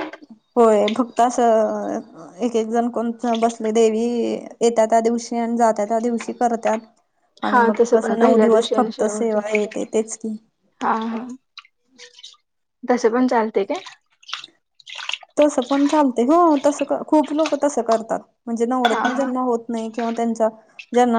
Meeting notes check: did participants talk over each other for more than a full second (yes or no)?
yes